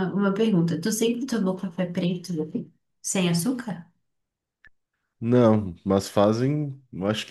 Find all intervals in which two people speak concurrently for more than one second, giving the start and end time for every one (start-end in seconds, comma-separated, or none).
none